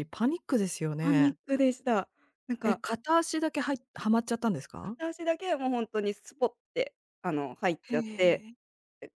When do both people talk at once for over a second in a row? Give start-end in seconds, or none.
none